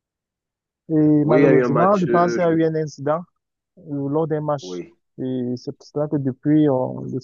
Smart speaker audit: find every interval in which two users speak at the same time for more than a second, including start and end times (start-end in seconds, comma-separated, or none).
1.2-2.5